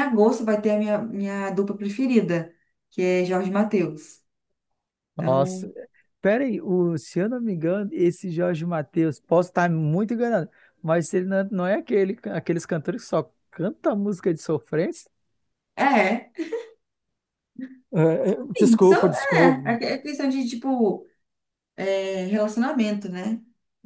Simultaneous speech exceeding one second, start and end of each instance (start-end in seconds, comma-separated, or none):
18.6-19.8